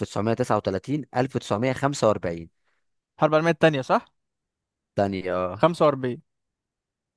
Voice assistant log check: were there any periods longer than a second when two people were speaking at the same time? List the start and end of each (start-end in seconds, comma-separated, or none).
none